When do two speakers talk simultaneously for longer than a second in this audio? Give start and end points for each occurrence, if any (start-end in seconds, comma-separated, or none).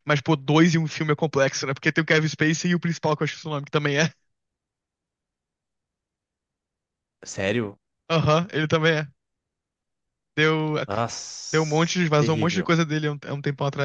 11.5-12.7